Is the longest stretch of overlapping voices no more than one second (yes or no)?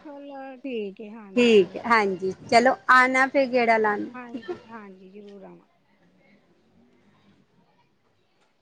yes